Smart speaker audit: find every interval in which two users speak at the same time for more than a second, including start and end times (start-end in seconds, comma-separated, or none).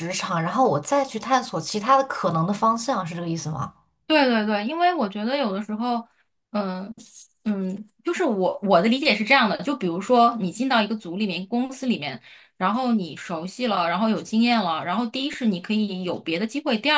none